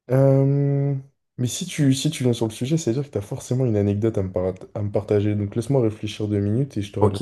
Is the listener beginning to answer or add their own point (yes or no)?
yes